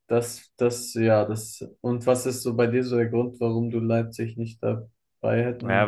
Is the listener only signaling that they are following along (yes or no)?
no